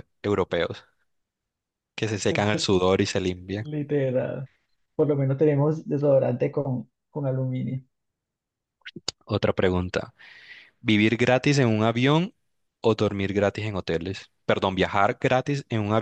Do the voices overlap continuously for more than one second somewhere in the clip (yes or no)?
no